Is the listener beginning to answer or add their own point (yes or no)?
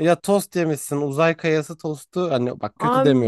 yes